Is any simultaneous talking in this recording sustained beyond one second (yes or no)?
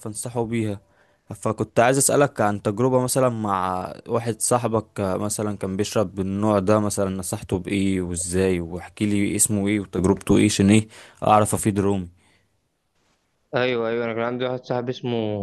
no